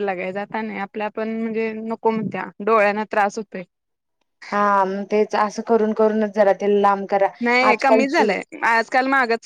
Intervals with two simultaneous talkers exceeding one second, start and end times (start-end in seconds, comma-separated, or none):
none